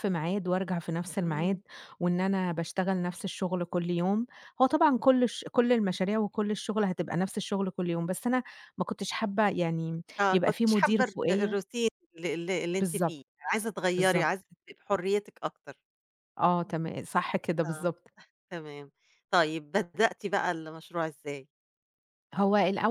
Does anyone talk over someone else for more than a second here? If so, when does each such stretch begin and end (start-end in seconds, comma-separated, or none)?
10.2-11.6